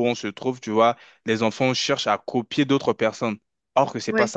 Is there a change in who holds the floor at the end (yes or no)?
no